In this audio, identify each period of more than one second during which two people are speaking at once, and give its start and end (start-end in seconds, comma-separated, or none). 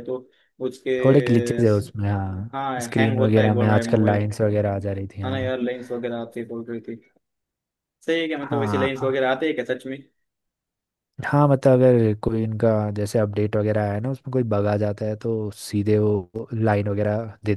2.5-4.3